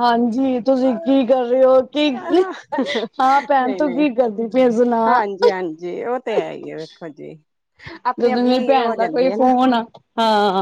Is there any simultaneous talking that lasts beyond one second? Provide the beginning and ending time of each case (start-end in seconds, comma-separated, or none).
8.2-9.5